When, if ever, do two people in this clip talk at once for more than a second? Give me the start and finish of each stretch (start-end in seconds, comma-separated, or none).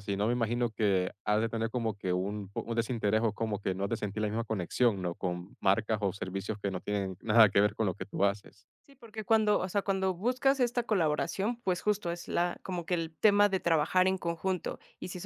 none